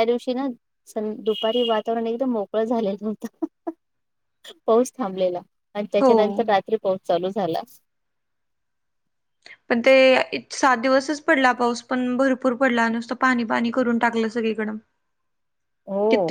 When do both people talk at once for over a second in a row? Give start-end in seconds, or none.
none